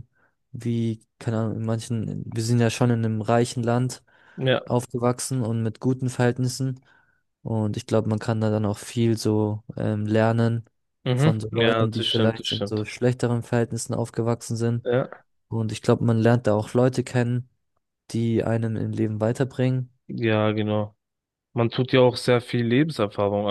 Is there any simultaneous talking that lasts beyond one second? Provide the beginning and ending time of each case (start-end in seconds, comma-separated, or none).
11.1-12.9